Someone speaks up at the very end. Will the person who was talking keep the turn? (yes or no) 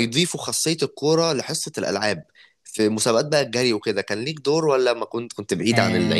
no